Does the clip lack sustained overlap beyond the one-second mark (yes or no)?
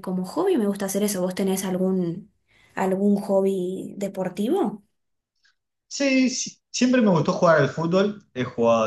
yes